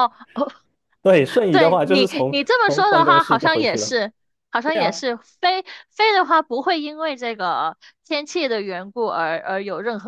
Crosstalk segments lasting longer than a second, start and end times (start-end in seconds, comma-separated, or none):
1.5-3.9